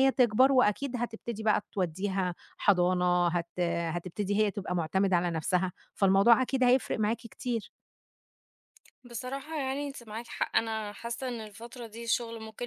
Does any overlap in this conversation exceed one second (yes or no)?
no